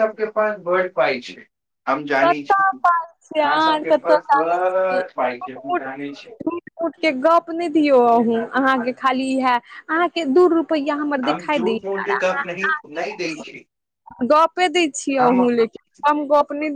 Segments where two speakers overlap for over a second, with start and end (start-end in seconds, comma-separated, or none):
2.3-4.5